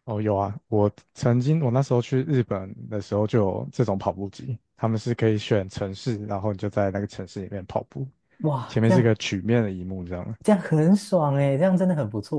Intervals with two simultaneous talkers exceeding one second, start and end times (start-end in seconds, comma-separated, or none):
none